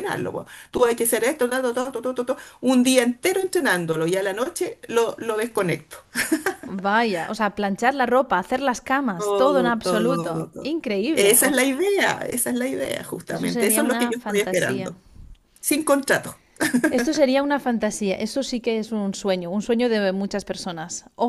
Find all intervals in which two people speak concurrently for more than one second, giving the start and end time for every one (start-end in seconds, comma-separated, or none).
9.2-11.7, 13.3-14.9